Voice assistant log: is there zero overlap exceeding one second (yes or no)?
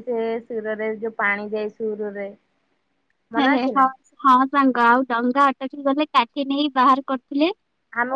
yes